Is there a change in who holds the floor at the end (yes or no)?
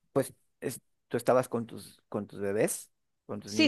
yes